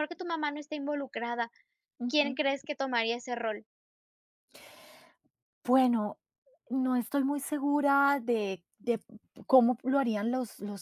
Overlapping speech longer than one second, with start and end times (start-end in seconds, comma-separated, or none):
none